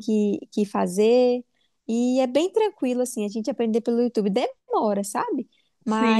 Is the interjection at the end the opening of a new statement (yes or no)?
no